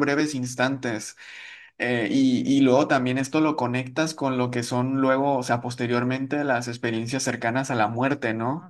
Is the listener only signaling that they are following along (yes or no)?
yes